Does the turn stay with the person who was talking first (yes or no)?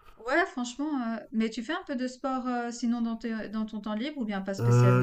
no